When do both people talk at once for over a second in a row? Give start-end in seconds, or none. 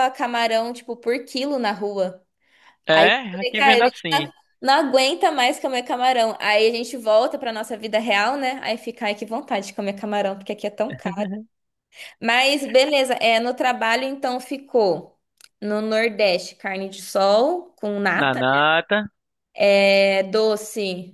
2.9-4.3